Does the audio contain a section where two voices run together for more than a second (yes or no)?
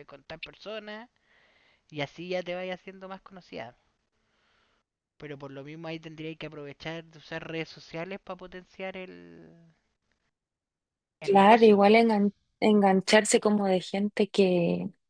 no